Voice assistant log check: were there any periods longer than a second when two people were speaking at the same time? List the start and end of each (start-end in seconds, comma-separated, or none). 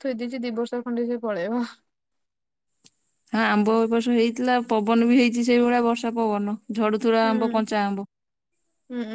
none